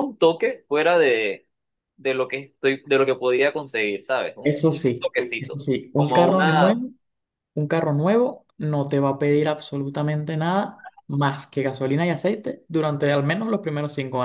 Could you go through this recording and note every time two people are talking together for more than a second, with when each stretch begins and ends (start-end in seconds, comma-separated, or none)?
4.4-6.8